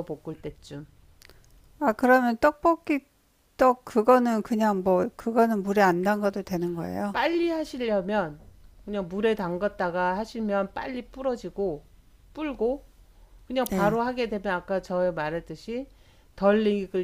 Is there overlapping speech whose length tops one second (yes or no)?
no